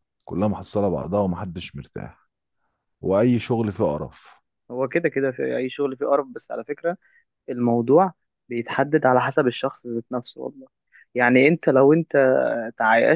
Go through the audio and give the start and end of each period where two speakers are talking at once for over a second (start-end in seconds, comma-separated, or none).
none